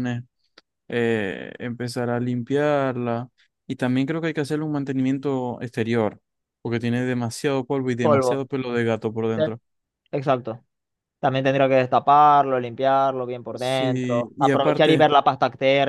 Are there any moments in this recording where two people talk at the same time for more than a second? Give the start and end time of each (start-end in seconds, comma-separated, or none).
13.6-15.1